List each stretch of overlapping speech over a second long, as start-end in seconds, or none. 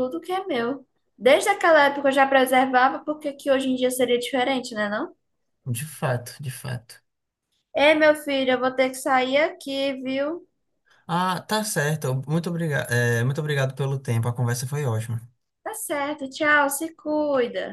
none